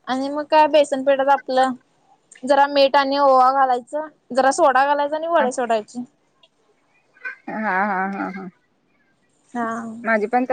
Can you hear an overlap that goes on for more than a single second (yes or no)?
no